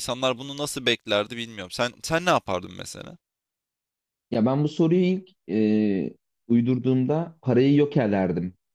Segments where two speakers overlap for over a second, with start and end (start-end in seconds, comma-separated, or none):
none